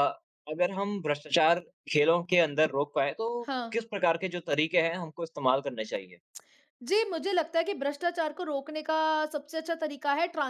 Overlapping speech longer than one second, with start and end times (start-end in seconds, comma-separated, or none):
none